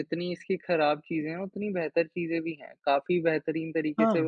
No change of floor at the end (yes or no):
yes